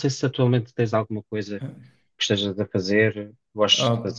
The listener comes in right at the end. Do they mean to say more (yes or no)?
yes